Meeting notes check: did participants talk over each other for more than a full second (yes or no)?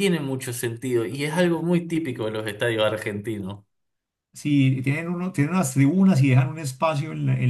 no